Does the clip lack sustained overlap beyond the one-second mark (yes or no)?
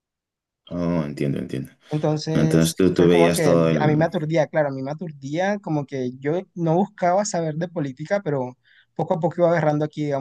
no